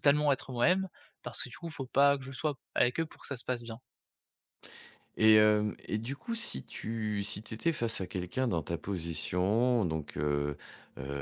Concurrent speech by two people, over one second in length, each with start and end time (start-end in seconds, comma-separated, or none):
none